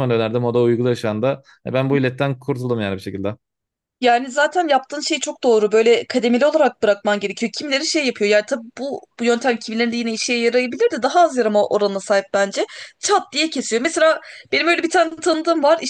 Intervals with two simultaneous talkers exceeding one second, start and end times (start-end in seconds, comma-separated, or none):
none